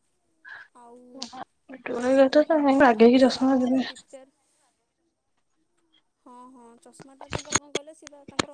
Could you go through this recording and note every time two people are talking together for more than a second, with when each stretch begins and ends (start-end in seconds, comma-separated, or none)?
1.9-3.8